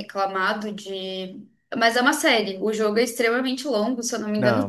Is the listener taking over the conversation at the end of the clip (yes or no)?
no